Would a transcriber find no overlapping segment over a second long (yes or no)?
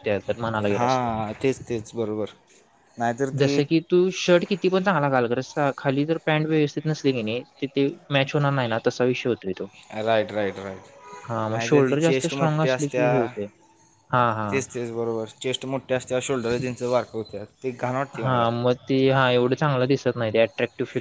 no